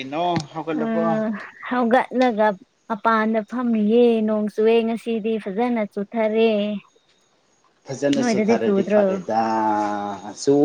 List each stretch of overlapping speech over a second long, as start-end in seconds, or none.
none